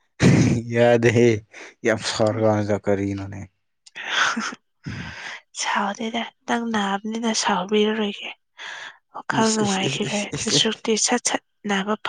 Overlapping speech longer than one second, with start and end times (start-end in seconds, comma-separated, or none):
9.3-10.6